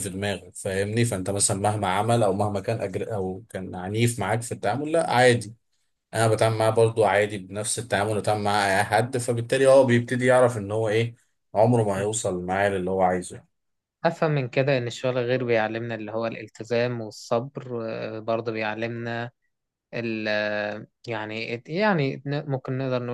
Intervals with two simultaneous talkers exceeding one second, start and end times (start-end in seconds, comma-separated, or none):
none